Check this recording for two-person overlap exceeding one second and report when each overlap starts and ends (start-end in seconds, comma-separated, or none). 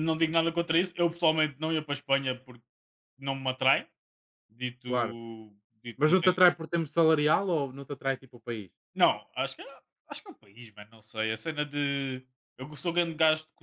none